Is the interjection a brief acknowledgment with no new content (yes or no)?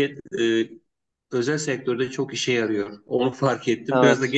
yes